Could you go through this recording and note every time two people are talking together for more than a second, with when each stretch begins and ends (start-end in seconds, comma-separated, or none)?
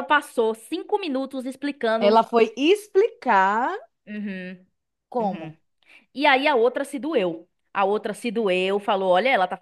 none